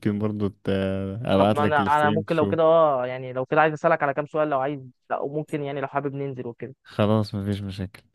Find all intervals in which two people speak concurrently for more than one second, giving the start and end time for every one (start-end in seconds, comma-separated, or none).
1.4-2.8